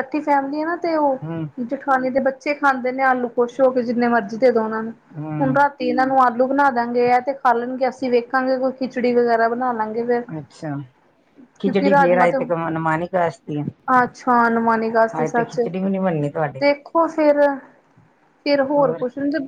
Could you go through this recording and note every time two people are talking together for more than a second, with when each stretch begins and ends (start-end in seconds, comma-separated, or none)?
none